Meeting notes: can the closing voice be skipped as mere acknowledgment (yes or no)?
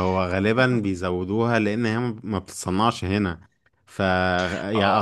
yes